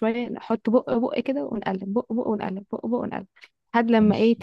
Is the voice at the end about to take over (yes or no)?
no